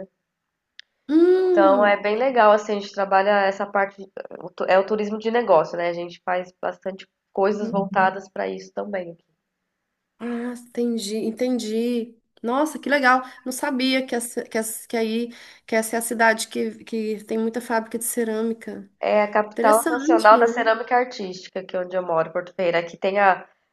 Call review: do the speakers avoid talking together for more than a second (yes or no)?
no